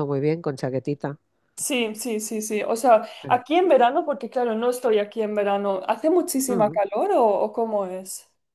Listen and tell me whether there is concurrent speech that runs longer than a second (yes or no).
no